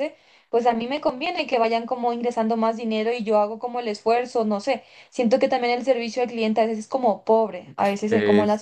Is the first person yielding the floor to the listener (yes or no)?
yes